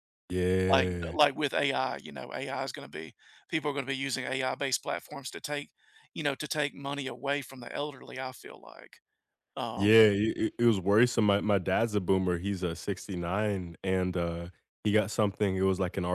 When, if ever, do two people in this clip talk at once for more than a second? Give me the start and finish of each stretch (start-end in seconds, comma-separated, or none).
none